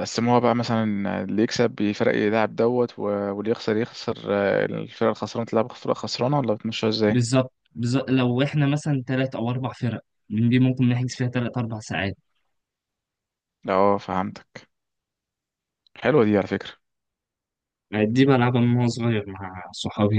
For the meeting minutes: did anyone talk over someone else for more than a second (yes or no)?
no